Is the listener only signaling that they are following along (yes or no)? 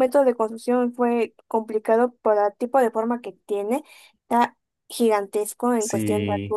yes